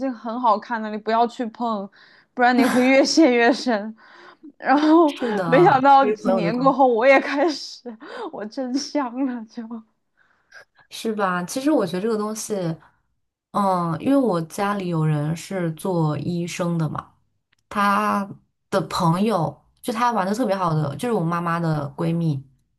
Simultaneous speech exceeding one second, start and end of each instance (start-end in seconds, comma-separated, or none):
5.1-6.8